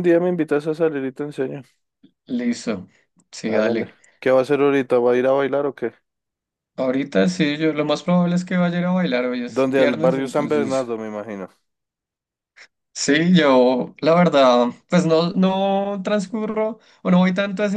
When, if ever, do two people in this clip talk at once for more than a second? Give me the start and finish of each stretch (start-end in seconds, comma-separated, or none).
9.5-10.9